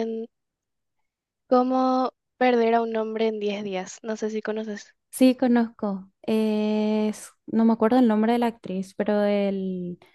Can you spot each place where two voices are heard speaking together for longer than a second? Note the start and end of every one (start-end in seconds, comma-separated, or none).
none